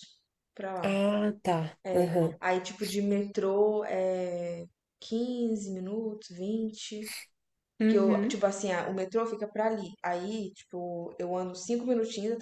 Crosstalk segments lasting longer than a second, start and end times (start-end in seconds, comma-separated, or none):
none